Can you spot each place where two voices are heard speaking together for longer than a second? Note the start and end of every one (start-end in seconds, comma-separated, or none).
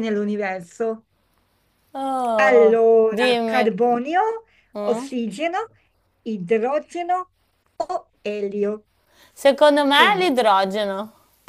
2.4-3.7